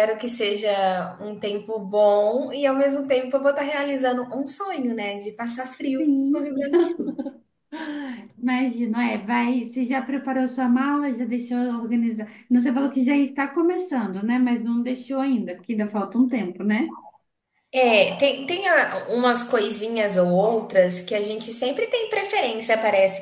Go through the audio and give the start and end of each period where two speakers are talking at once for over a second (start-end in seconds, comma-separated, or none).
none